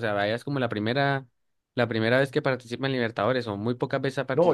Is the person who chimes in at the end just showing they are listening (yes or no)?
no